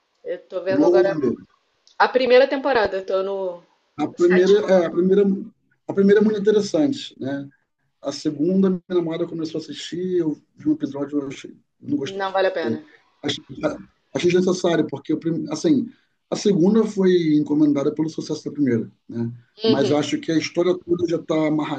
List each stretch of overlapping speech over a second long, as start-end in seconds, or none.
none